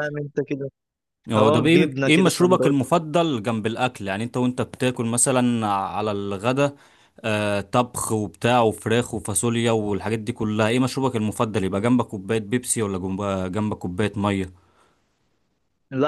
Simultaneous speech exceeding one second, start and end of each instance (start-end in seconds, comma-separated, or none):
1.4-2.8